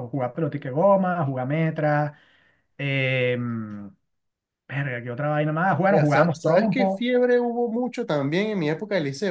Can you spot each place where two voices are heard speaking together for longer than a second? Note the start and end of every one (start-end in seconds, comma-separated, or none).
5.9-7.1